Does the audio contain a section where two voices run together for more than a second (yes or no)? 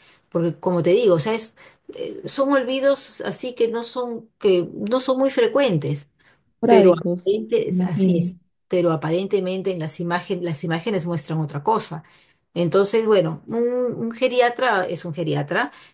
yes